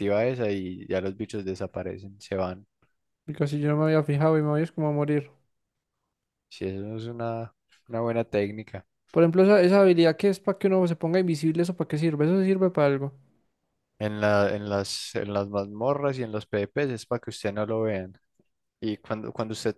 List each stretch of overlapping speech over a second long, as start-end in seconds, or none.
none